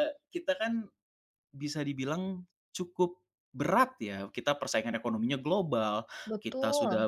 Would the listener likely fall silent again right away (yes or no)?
yes